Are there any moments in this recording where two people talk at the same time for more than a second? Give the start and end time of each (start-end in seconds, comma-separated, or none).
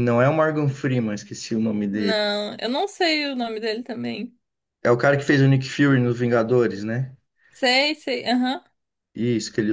none